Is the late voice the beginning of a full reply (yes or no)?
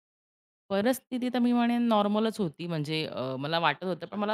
no